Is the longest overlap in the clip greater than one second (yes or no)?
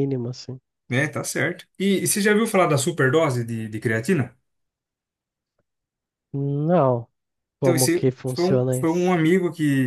yes